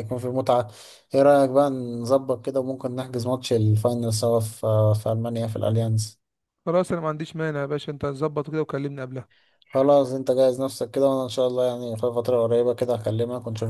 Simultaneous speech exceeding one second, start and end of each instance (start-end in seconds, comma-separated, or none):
none